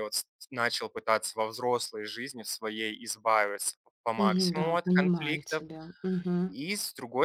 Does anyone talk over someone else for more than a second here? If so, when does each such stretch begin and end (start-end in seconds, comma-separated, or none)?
4.2-5.6